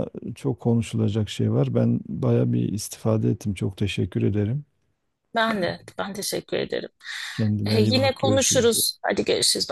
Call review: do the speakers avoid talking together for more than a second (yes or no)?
no